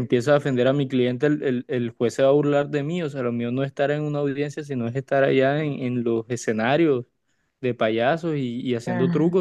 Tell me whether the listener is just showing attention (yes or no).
no